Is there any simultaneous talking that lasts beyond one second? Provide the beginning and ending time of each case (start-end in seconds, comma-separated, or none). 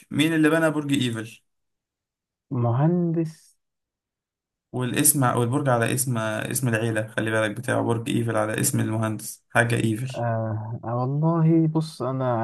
none